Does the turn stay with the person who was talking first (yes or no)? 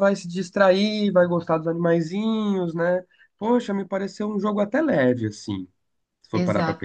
no